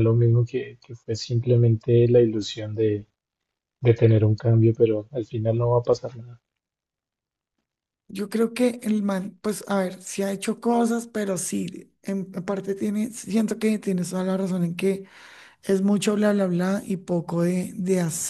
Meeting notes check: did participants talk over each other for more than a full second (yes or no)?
no